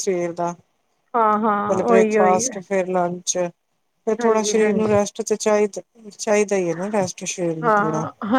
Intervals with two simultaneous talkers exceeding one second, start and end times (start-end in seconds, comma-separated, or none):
none